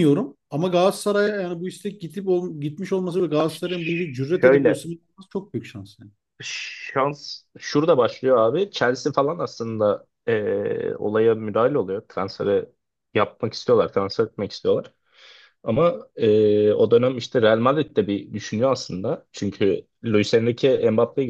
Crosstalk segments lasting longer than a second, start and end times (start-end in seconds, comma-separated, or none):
none